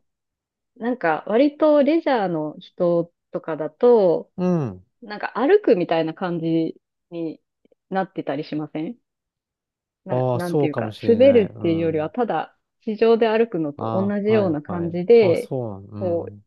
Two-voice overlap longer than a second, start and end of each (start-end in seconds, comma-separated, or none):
10.1-12.1, 13.8-15.5